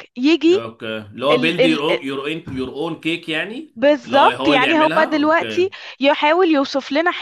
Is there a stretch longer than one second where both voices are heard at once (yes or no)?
yes